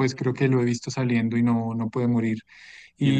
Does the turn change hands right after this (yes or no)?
no